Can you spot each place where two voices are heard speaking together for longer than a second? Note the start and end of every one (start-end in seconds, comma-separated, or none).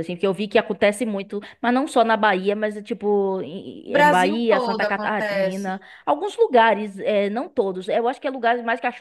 3.9-5.7